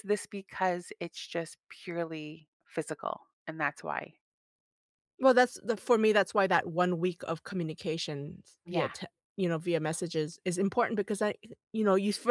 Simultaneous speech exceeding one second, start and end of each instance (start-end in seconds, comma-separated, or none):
none